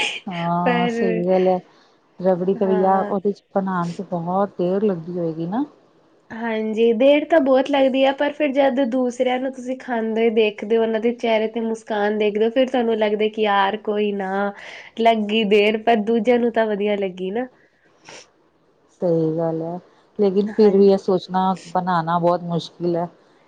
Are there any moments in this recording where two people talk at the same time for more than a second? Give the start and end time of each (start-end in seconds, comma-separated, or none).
none